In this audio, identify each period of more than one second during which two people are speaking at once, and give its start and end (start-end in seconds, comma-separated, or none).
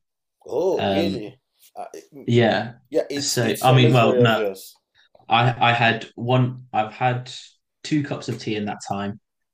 3.2-4.4